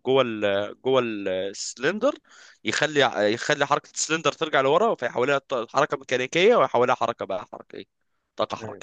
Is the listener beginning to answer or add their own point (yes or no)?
no